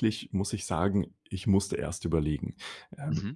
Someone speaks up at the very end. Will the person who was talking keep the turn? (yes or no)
yes